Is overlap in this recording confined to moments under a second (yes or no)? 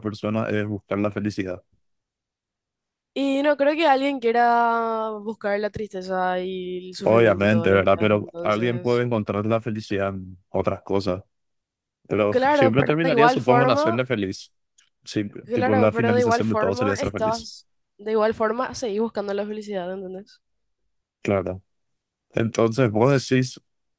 no